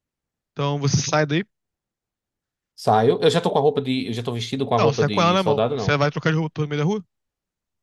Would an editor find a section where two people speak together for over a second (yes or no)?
yes